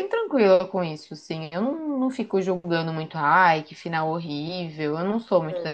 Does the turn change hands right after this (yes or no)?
yes